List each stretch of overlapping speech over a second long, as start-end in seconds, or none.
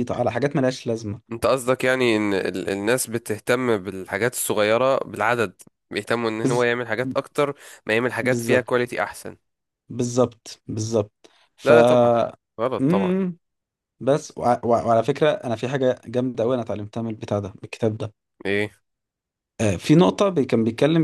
none